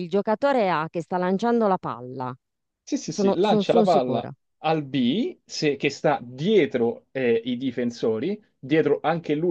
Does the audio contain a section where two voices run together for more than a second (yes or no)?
yes